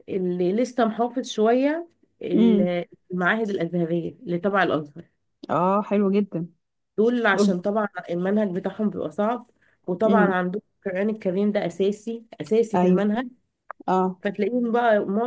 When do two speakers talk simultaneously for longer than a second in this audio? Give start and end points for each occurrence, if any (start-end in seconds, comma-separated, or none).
none